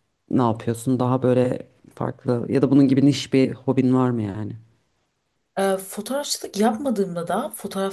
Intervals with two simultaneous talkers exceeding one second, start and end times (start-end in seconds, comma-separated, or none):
none